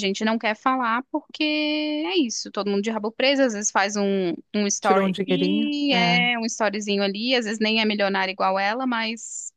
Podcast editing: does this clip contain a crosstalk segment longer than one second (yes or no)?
yes